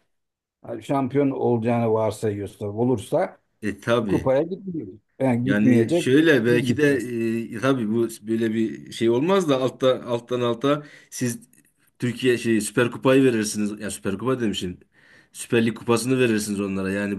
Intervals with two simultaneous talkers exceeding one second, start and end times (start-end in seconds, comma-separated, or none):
5.4-6.9